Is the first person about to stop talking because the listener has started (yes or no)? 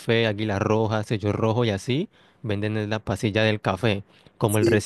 no